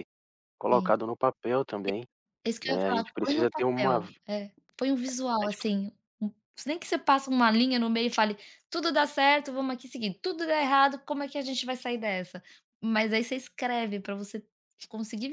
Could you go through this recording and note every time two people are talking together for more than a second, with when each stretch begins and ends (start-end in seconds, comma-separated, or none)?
2.6-4.2